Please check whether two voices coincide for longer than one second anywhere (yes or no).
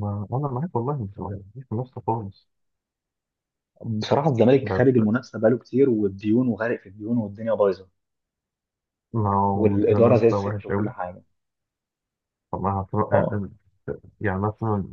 yes